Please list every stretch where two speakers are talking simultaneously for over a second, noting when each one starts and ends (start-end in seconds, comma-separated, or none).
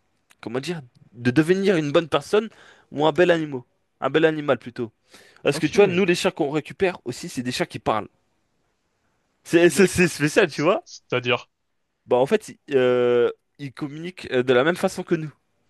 none